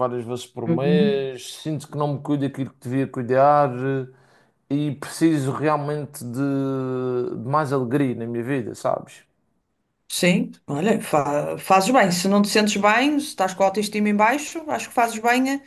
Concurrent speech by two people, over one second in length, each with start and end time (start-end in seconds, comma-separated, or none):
none